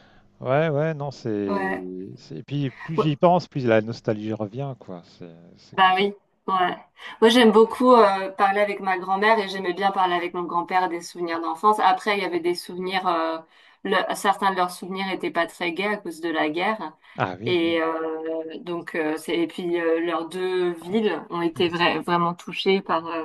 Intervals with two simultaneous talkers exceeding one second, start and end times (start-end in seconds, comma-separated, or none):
none